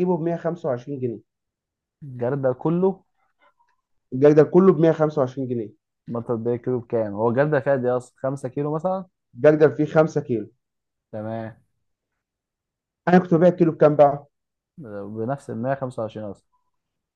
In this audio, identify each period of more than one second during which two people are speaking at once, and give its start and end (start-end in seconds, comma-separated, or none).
none